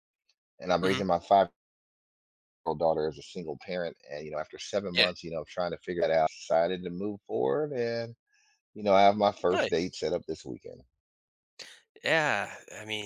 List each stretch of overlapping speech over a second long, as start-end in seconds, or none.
none